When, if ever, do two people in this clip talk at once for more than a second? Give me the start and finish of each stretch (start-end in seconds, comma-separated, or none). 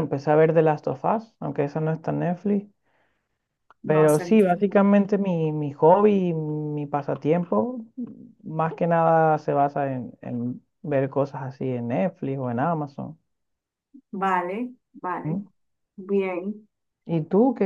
none